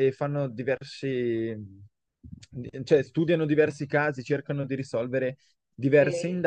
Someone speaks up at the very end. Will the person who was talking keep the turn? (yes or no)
yes